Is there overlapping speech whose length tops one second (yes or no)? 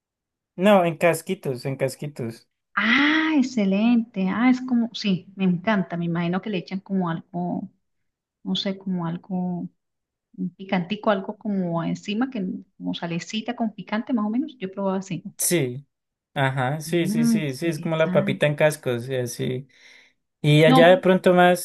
yes